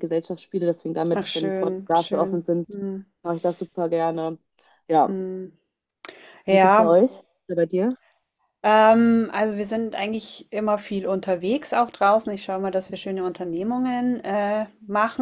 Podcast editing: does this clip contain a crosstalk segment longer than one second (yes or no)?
yes